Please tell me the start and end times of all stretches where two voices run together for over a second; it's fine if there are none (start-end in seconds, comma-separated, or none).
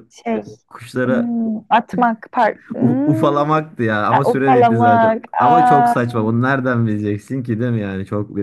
4.1-5.9